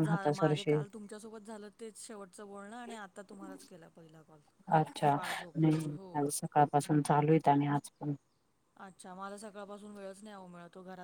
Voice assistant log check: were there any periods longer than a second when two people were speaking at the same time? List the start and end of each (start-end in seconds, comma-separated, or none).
none